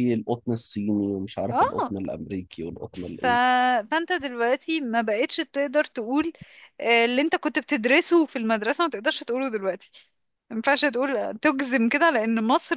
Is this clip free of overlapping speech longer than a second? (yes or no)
yes